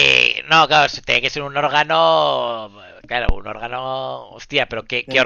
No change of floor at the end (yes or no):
no